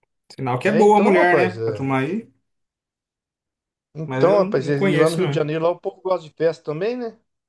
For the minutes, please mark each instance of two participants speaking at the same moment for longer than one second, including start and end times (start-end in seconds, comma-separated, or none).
0.6-1.9, 4.0-5.4